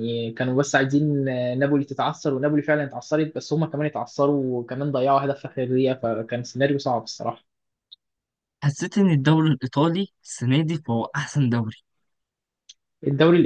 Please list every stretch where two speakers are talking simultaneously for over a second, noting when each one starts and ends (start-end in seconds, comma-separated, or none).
none